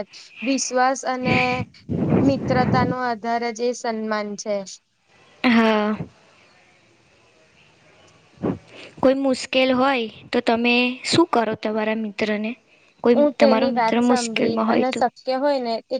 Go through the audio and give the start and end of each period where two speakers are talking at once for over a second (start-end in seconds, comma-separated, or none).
13.2-15.0